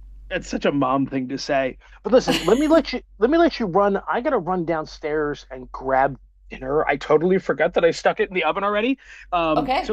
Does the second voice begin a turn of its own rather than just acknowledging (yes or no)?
no